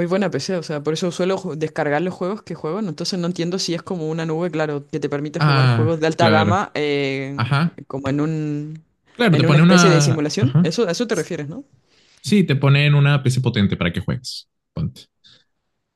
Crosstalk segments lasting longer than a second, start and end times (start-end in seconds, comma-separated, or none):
5.4-6.6, 9.3-10.8